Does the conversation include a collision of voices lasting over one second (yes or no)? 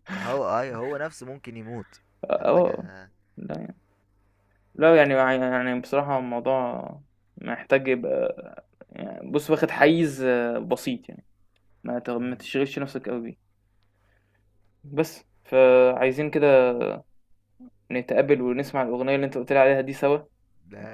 no